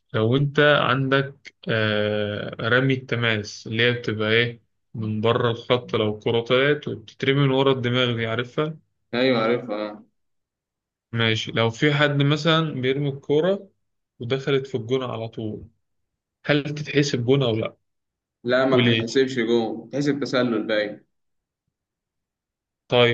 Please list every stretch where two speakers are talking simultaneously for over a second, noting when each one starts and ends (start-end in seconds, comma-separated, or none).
none